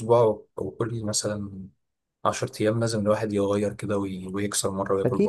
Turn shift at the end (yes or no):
yes